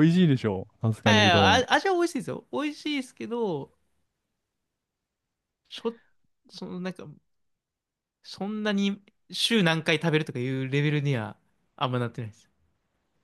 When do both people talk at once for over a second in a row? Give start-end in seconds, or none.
none